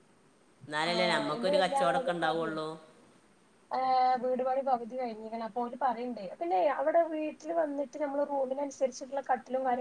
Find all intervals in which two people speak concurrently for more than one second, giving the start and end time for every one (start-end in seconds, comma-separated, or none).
0.9-2.5